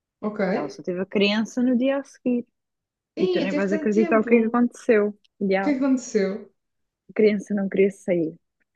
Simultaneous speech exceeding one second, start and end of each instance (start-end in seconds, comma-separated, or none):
3.2-4.6